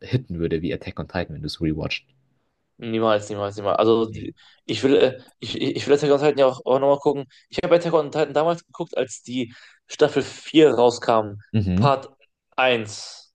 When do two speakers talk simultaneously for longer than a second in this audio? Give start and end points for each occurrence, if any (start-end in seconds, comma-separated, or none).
none